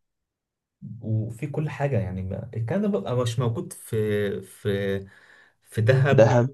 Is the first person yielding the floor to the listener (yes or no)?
no